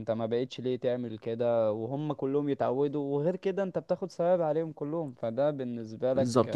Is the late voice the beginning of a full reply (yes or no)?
yes